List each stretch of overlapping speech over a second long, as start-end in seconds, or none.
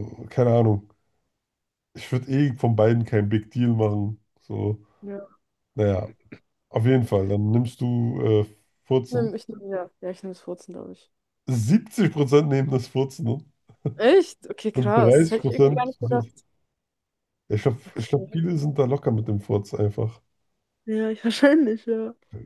14.7-16.3